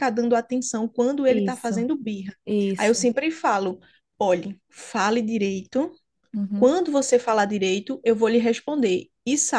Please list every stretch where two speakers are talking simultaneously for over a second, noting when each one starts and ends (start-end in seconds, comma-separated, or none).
none